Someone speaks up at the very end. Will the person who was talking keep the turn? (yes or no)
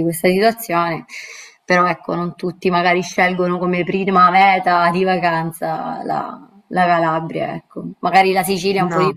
yes